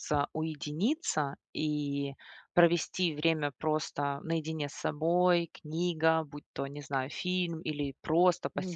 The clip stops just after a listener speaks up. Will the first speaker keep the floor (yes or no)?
yes